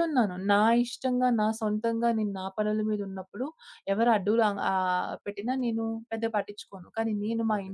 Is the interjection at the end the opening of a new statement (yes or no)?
no